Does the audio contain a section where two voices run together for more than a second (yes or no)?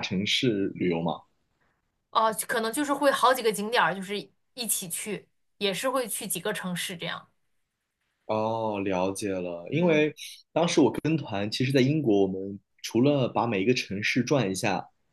no